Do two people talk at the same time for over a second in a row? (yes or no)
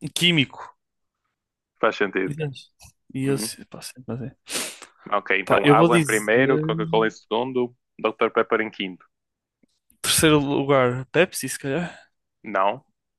yes